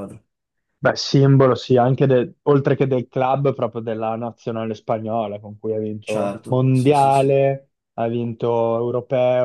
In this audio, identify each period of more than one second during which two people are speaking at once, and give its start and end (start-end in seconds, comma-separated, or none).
6.0-7.4